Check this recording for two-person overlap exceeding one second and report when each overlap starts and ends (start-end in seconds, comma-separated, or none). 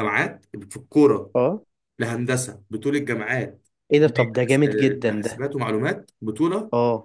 4.0-5.4